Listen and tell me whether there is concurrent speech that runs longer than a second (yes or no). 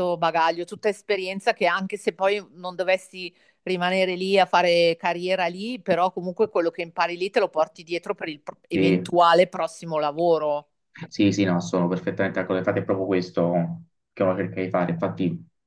no